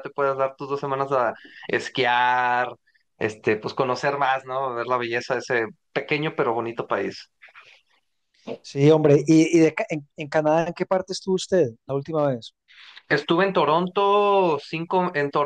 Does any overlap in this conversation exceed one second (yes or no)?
no